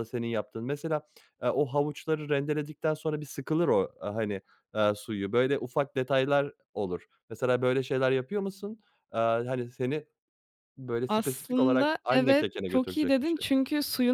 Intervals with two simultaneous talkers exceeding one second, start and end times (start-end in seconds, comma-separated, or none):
11.1-13.5